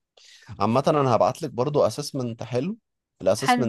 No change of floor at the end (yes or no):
yes